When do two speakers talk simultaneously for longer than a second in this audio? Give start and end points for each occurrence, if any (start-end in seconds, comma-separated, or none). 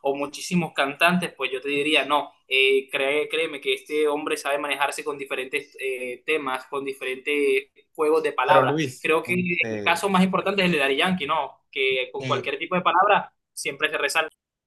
8.4-10.0